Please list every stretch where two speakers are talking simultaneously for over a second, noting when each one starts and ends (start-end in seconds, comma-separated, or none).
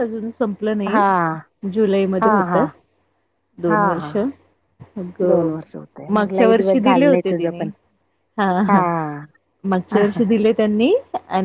6.2-7.7